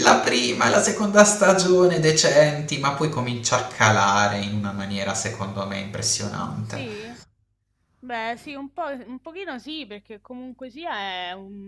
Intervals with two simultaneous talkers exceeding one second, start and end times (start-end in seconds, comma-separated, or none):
none